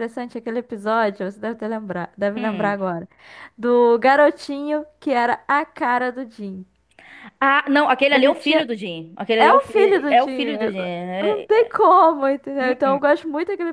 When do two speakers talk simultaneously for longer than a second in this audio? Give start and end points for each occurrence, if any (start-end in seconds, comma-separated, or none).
9.4-11.7